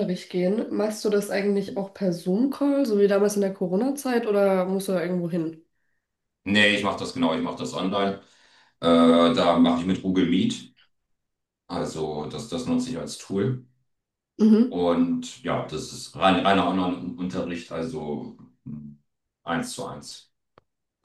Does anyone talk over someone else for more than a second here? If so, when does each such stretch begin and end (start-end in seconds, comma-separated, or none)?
none